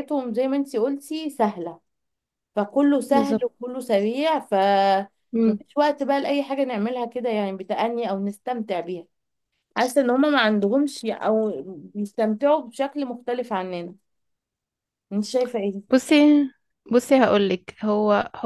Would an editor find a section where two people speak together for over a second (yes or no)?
no